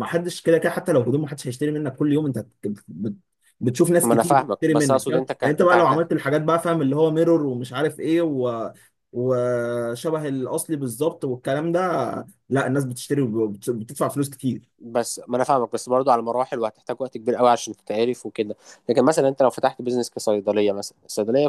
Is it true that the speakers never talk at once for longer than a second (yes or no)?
no